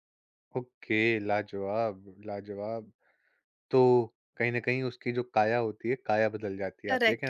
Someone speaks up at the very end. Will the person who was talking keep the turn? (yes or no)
no